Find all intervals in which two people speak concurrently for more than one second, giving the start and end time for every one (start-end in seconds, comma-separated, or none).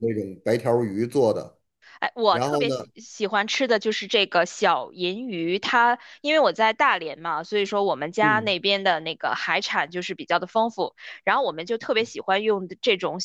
none